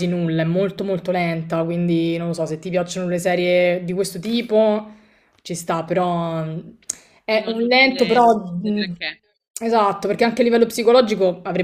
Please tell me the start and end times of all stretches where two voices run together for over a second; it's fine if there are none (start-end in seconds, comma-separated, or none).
7.3-8.9